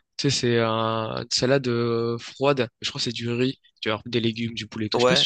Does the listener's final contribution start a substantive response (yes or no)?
yes